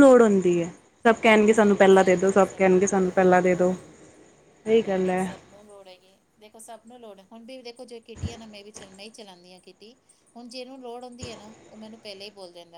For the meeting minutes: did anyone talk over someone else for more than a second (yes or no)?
yes